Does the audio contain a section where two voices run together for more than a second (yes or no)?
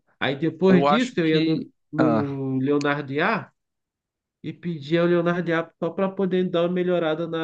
yes